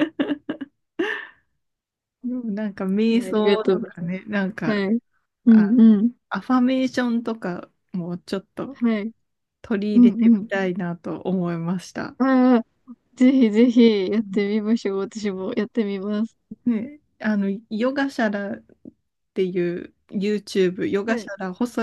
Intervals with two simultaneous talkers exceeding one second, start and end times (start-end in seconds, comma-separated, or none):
3.1-4.8